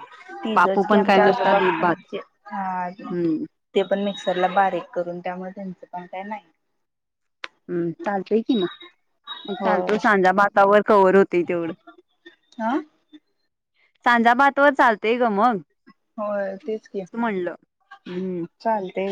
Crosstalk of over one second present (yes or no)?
yes